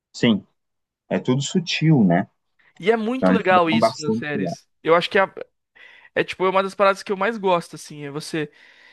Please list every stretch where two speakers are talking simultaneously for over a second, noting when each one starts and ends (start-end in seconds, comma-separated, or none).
3.2-4.6